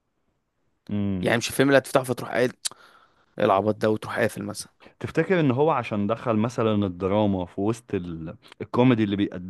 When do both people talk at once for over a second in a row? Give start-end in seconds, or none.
none